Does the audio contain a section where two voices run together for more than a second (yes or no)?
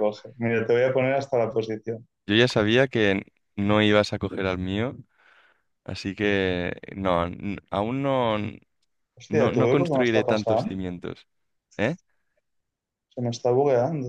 yes